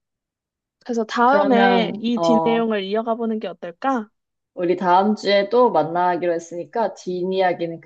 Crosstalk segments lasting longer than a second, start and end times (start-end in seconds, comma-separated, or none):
1.3-2.7